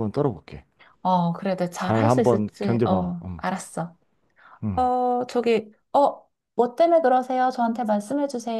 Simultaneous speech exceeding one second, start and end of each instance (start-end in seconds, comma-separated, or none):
1.8-3.4